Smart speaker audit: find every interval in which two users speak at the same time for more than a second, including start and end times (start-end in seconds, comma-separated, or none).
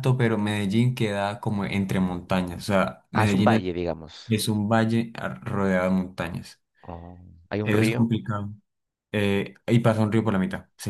none